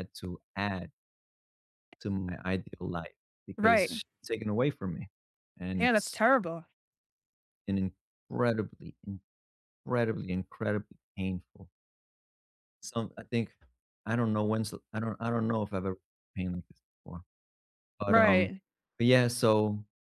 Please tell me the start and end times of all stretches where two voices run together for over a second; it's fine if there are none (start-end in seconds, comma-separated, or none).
none